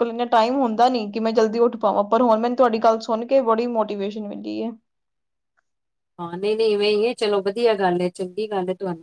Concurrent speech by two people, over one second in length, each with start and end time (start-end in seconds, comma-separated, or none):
none